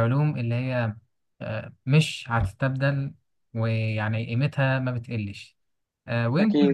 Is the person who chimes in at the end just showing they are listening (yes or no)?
yes